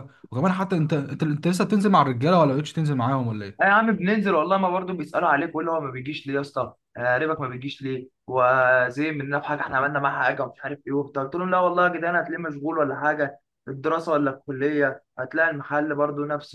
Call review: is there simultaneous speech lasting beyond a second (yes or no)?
no